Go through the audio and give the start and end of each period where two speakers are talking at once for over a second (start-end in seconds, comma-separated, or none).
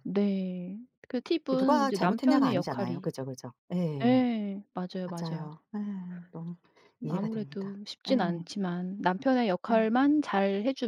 1.5-3.0, 7.1-8.5